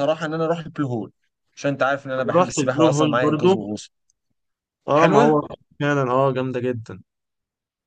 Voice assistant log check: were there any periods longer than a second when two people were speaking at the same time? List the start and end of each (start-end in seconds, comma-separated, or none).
2.2-3.5